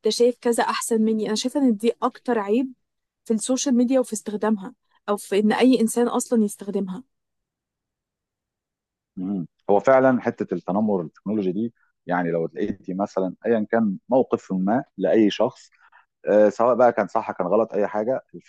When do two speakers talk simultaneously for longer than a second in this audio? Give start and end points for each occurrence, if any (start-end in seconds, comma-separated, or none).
none